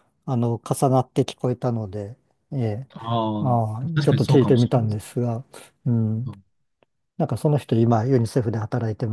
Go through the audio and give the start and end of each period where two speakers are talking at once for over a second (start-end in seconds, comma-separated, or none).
3.4-5.0